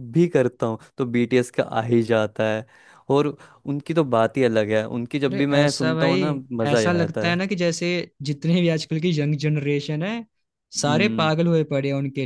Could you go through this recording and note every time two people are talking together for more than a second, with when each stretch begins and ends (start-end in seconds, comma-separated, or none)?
5.3-7.4